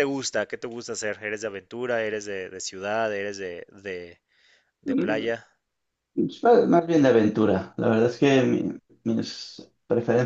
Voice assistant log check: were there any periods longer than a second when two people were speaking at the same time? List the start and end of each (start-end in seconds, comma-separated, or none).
none